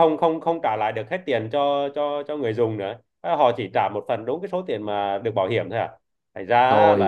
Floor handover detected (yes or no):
yes